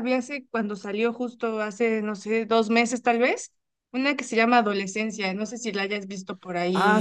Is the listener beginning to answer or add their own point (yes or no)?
yes